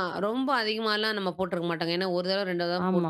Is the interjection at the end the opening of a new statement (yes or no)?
yes